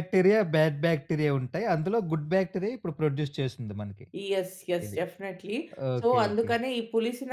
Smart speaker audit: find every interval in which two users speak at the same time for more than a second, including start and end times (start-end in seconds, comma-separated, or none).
none